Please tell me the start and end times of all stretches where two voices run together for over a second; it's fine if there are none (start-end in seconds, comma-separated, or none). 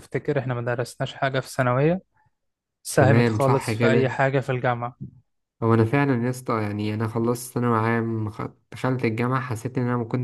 3.0-4.2